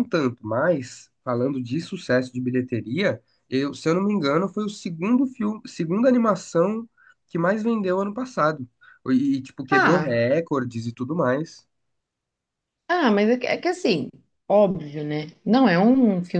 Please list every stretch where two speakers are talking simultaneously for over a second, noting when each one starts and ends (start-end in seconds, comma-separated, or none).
none